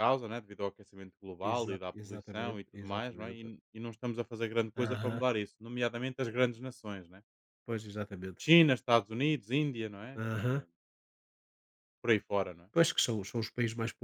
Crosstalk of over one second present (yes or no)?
yes